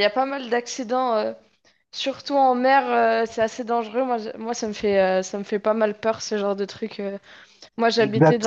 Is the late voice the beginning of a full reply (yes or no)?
no